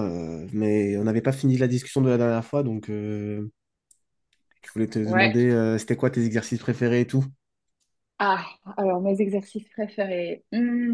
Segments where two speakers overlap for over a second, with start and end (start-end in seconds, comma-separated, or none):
none